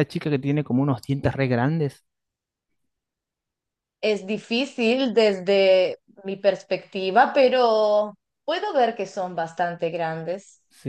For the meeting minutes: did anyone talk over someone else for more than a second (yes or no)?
no